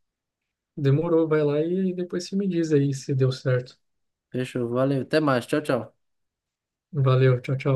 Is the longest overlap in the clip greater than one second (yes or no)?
no